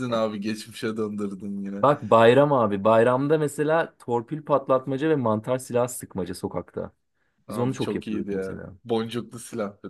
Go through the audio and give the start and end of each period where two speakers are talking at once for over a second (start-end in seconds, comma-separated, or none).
7.5-8.7